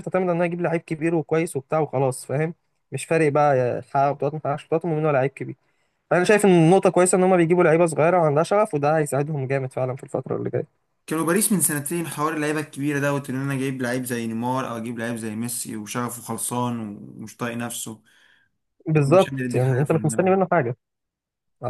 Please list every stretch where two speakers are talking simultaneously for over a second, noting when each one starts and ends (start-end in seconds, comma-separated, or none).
19.0-20.3